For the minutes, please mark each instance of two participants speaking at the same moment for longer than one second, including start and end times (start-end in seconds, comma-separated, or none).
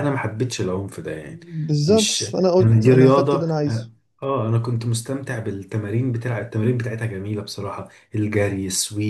1.9-3.9